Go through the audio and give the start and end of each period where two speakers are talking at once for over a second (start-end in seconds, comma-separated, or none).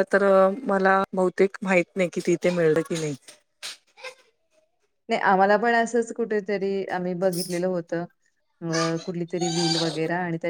none